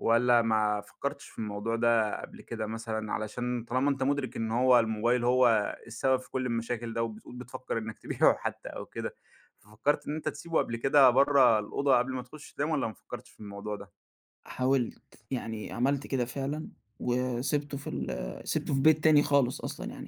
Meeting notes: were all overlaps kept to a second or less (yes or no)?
yes